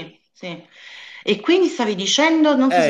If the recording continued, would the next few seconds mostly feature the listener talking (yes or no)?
yes